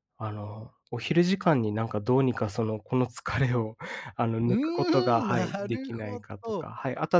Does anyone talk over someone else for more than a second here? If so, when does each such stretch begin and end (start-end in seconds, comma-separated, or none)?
5.2-6.7